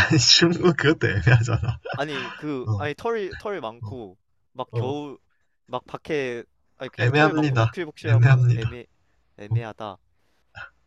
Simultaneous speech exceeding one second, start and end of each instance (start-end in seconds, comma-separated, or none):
7.0-8.7